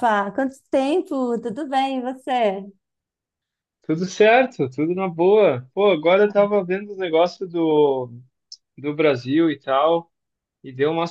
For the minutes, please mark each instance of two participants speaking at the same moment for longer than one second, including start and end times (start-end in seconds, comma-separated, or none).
none